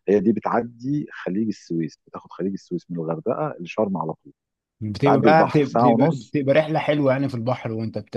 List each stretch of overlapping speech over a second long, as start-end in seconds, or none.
5.0-6.3